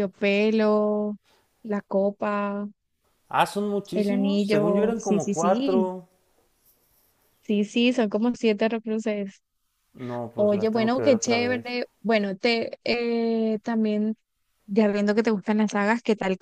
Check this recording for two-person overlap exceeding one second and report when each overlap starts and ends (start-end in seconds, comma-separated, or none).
3.9-5.9, 10.4-11.7